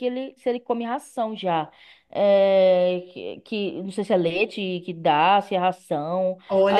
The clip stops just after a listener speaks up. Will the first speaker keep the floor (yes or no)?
no